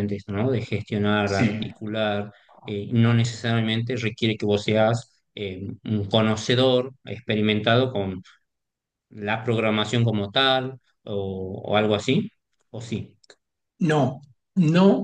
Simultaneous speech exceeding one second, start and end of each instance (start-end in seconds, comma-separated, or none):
none